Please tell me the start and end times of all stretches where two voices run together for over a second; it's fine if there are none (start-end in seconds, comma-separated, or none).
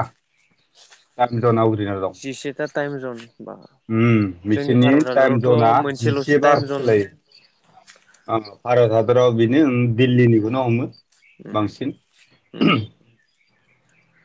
4.5-6.8